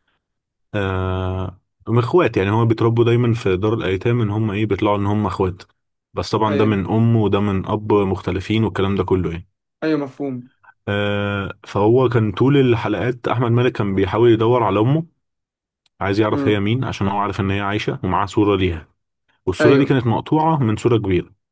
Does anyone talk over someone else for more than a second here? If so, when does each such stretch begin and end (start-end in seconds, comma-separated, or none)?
none